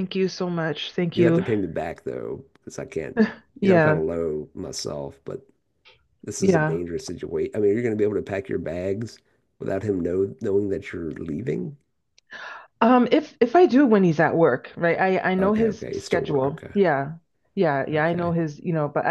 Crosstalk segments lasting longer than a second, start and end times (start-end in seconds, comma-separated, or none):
15.4-16.7